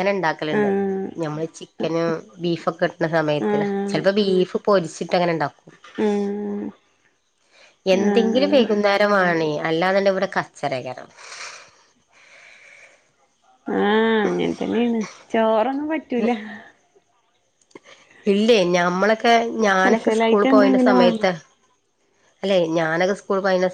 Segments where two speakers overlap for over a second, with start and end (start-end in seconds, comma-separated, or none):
19.8-21.3